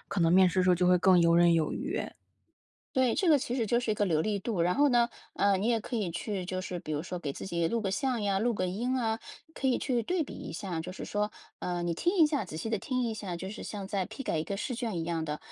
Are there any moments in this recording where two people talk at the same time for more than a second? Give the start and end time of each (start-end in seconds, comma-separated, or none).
none